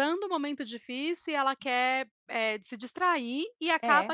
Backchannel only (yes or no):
yes